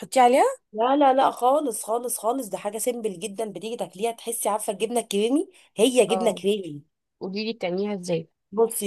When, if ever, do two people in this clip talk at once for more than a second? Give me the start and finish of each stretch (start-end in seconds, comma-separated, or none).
none